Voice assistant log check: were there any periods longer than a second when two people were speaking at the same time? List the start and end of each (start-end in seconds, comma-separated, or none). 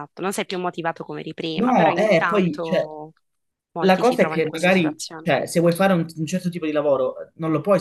1.5-2.9, 3.8-5.3